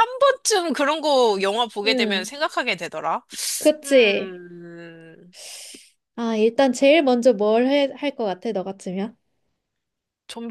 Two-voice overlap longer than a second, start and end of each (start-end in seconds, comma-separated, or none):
none